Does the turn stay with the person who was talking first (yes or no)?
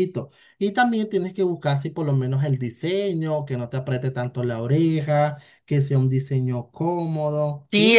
no